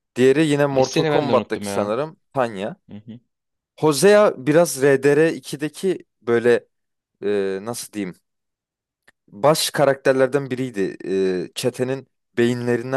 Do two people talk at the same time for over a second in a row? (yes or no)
yes